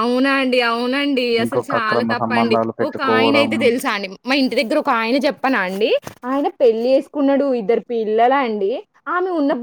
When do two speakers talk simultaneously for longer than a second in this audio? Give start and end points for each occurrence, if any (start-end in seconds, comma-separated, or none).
1.4-3.5